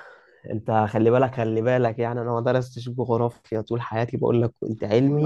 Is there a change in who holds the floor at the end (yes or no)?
yes